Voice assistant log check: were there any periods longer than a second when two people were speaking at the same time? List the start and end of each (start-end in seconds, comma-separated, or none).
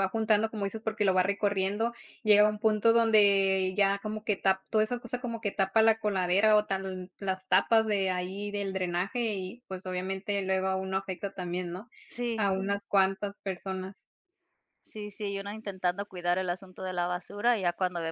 none